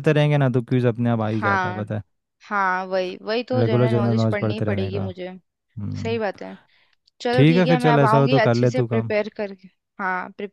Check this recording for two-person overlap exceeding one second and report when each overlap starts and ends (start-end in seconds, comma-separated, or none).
3.5-5.0, 7.3-9.1